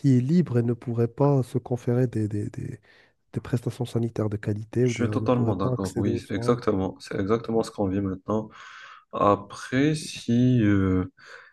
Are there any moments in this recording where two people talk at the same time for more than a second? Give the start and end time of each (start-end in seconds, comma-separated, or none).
4.8-6.6